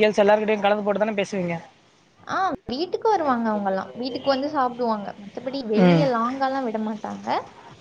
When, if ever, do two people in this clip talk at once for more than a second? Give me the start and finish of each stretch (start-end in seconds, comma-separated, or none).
none